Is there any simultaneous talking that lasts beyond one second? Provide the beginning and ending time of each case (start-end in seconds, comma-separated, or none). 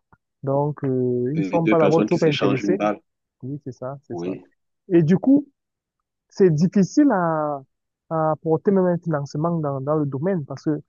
1.3-2.9